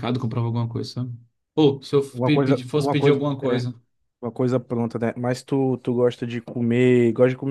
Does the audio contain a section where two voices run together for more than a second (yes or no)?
yes